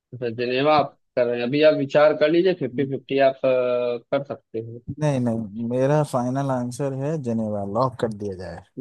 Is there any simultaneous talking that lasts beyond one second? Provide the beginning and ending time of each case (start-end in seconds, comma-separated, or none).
none